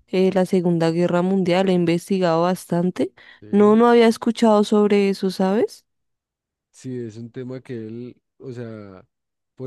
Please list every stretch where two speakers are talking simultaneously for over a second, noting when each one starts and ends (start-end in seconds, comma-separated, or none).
none